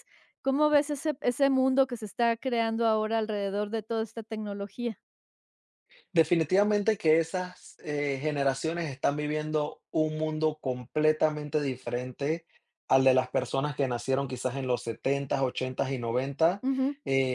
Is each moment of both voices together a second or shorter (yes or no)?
yes